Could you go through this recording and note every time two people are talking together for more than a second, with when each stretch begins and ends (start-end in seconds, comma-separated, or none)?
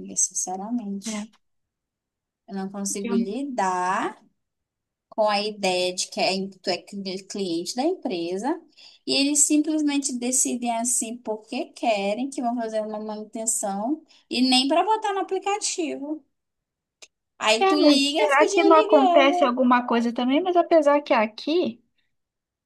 17.6-19.6